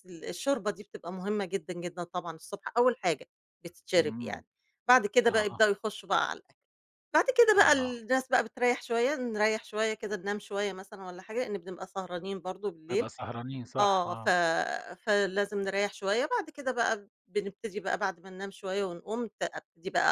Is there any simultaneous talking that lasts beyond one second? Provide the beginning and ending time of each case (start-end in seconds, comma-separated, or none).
none